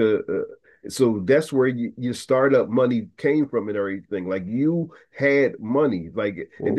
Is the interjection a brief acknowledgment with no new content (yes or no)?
no